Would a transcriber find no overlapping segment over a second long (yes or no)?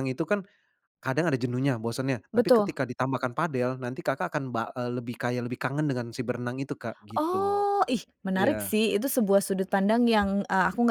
yes